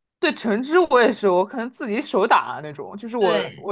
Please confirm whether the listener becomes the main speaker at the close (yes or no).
no